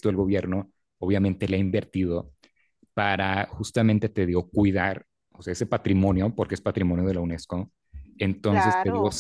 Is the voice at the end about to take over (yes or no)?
no